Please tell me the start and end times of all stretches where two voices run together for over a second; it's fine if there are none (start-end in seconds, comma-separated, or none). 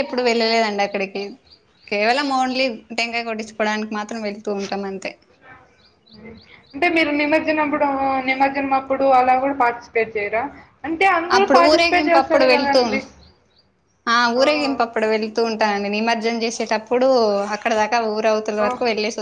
11.4-12.8